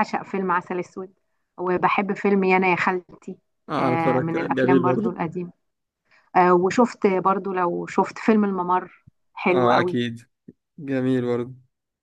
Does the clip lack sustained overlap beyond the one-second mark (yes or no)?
no